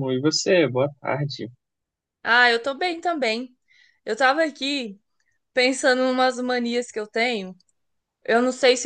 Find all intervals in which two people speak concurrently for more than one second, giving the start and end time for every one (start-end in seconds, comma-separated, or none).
none